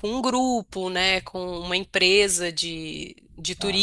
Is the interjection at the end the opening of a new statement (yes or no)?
no